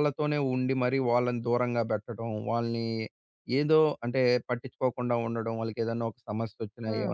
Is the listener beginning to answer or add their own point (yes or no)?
no